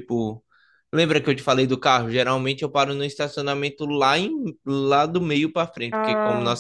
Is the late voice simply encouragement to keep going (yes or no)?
yes